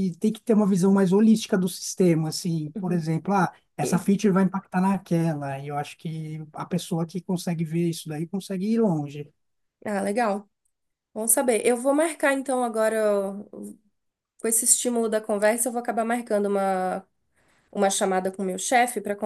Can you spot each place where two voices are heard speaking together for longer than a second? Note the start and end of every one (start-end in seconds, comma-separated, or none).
none